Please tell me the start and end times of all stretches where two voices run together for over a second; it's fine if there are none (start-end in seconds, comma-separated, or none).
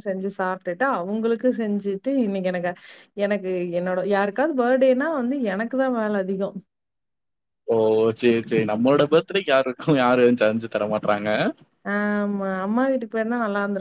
none